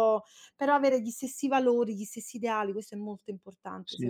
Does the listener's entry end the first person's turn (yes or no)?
yes